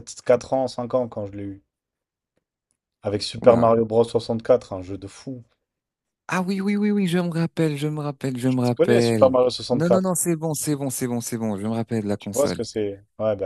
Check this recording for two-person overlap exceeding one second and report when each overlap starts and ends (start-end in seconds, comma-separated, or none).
8.4-10.1